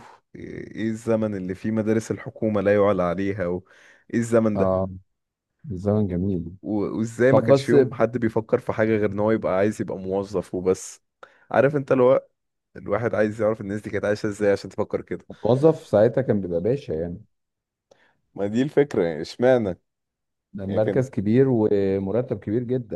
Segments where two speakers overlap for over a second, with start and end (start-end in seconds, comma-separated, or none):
none